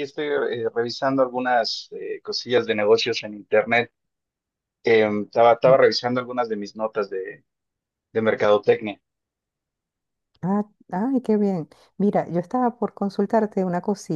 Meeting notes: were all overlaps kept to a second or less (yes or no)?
yes